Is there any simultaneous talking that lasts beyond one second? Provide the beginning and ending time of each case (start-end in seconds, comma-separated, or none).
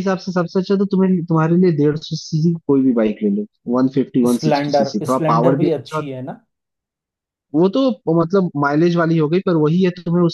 4.3-6.1